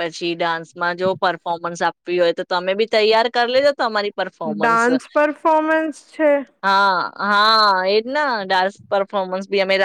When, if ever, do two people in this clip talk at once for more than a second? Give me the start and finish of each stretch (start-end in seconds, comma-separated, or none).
none